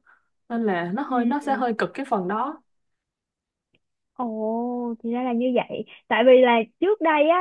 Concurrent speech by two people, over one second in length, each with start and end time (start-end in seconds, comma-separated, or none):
none